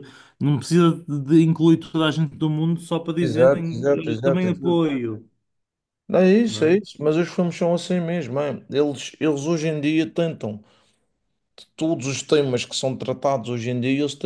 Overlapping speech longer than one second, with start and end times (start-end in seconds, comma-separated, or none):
3.2-4.8